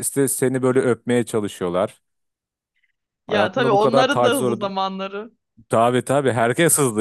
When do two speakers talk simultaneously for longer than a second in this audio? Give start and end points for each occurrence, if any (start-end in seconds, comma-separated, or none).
3.3-4.7